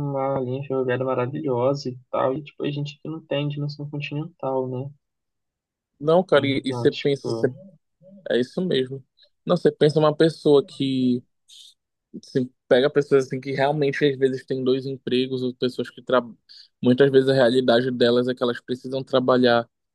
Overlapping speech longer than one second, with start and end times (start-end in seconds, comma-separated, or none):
6.3-7.5